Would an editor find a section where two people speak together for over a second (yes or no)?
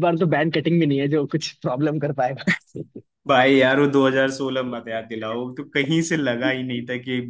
no